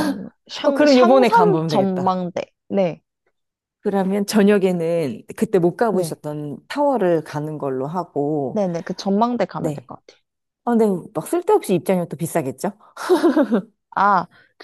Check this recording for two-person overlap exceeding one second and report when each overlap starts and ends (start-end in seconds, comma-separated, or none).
0.6-2.2